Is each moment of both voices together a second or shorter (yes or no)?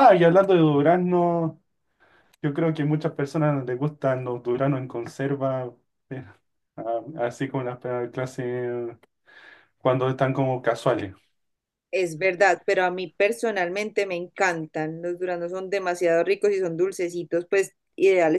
yes